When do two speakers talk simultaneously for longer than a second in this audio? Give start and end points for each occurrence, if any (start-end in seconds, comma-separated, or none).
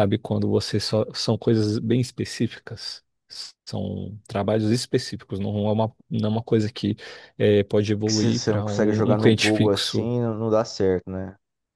8.1-10.1